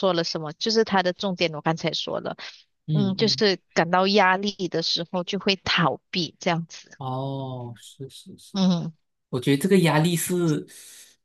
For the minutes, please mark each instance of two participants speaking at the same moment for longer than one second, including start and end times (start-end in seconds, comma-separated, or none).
none